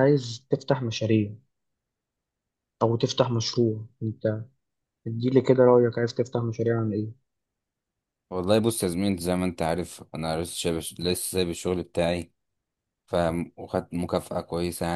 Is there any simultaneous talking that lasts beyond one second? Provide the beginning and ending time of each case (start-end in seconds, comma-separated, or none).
none